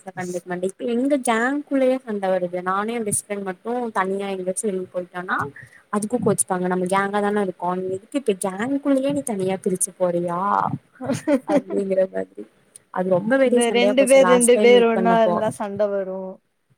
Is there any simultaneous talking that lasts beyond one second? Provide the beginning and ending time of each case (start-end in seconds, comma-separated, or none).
13.5-15.4